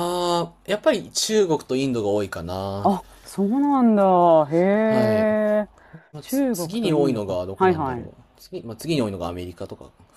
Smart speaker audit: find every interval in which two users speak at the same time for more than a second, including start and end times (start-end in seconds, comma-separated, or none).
6.2-8.1